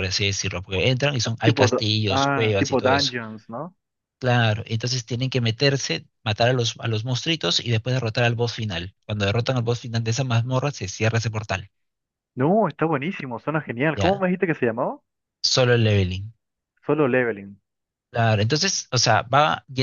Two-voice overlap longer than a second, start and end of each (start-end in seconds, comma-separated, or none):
1.2-3.1